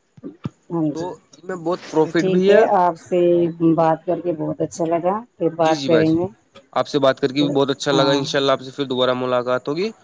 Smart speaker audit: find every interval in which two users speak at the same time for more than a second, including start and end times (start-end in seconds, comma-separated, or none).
0.9-2.5